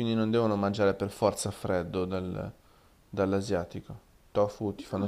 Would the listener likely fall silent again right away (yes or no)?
no